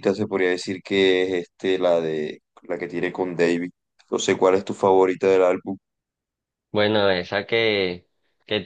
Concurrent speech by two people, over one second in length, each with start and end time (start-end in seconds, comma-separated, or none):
none